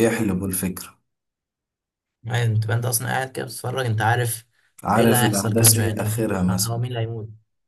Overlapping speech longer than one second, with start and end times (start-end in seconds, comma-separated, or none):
5.0-6.8